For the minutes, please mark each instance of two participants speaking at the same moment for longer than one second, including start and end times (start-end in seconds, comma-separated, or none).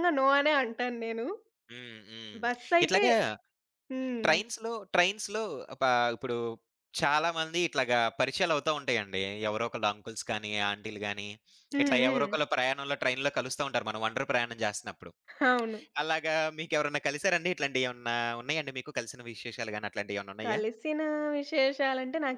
none